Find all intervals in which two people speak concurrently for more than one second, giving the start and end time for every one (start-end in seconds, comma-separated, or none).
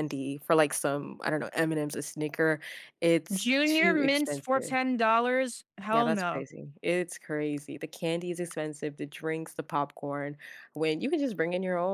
3.3-4.8